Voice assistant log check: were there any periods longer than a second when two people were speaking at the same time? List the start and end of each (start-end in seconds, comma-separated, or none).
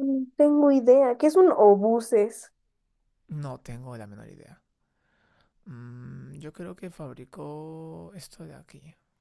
none